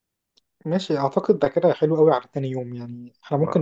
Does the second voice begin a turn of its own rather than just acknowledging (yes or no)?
no